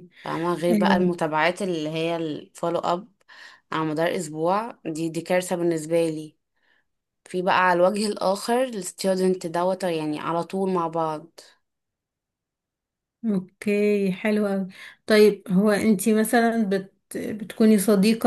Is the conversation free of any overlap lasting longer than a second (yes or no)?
yes